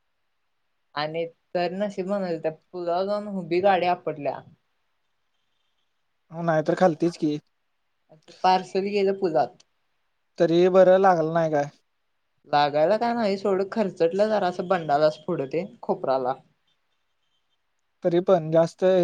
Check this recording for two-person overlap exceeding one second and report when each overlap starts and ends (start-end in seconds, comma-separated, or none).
none